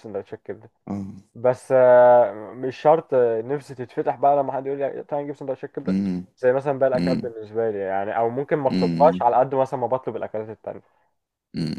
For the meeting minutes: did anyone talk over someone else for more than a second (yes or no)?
no